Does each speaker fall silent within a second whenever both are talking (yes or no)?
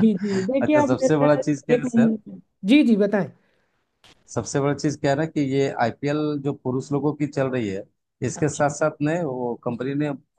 no